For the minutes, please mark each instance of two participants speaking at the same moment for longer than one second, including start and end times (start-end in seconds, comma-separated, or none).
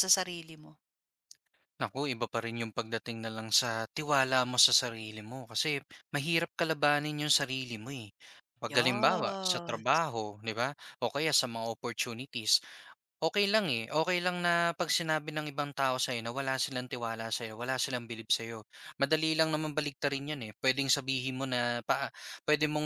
8.7-10.0